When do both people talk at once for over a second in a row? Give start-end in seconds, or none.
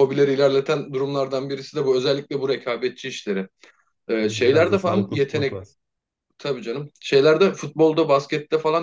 4.2-5.6